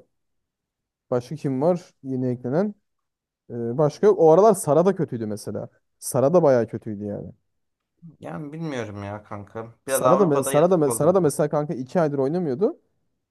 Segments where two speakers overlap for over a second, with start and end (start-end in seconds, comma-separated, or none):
9.8-11.3